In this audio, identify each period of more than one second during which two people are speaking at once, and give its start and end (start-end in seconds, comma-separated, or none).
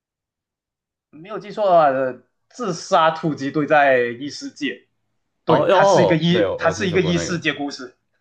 5.5-7.4